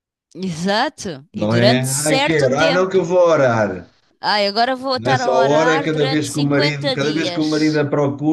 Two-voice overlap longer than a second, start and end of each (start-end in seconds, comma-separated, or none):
1.3-3.1, 5.0-7.8